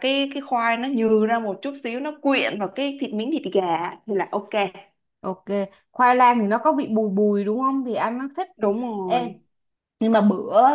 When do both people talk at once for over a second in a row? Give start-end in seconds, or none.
none